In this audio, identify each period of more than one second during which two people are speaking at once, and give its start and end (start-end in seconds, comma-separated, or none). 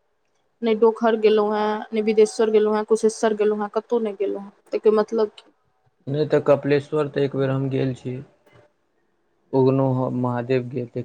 none